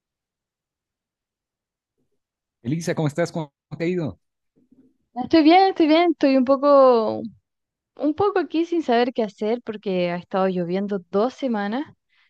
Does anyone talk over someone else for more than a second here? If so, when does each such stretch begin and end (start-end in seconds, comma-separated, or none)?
none